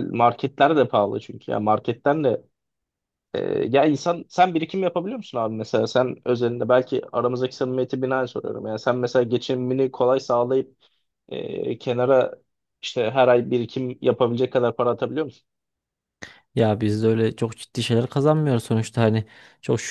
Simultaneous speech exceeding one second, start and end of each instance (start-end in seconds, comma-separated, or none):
none